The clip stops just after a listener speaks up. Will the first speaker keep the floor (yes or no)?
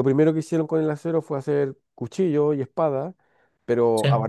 yes